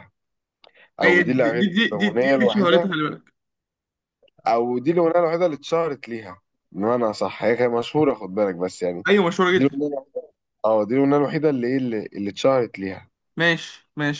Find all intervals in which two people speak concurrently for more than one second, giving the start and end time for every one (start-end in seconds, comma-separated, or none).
1.0-2.9